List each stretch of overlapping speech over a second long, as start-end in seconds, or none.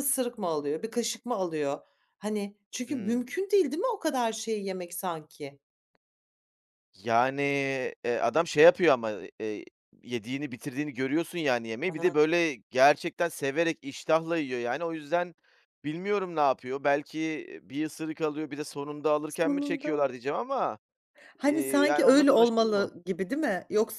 21.4-22.9